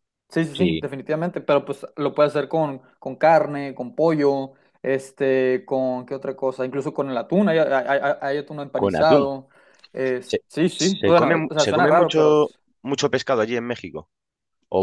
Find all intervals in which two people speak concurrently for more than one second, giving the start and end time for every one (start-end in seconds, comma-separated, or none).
10.2-12.6